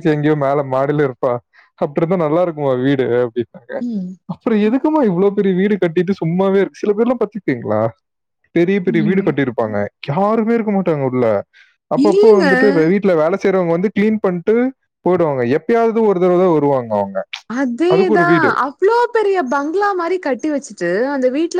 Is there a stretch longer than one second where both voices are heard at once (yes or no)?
no